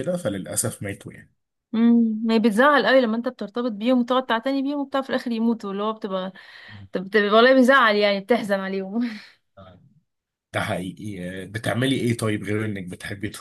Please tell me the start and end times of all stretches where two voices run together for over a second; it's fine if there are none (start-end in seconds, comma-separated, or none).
none